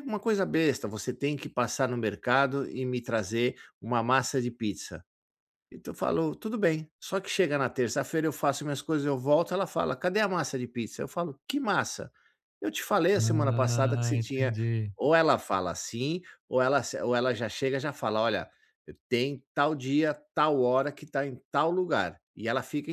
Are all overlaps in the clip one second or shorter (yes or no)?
no